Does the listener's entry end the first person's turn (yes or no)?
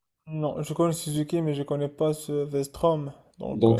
yes